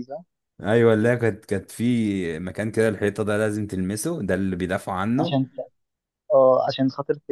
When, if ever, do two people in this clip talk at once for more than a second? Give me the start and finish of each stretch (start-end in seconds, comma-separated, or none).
none